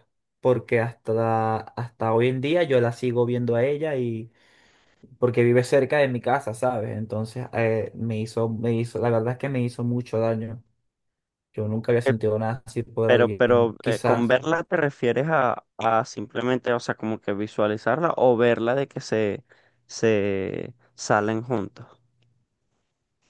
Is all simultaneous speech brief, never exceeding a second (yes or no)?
no